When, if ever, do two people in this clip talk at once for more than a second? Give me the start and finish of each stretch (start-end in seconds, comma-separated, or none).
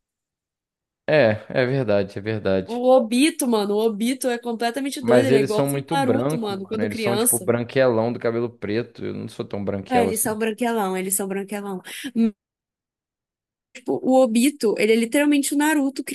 5.0-7.5